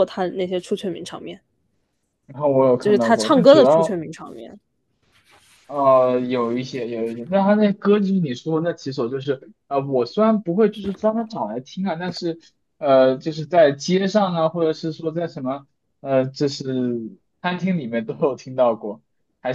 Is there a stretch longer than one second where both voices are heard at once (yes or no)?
yes